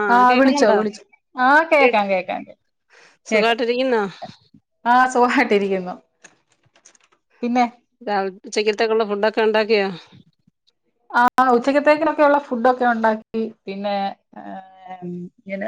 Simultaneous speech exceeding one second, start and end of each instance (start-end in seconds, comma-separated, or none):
none